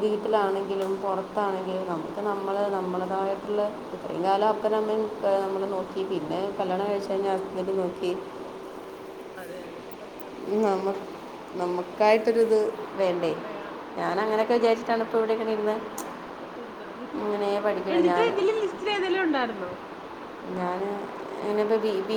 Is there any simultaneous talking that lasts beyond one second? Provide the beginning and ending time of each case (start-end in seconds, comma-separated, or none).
none